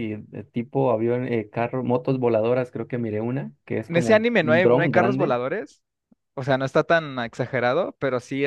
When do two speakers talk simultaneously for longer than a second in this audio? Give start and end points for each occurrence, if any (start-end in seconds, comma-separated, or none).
3.9-5.4